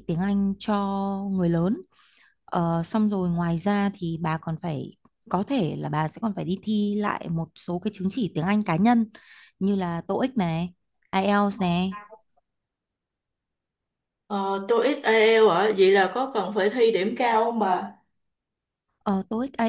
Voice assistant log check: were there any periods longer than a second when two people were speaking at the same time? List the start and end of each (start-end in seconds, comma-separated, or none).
none